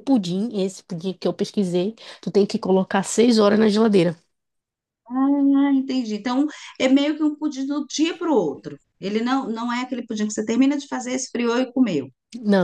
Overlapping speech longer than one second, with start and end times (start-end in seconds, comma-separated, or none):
none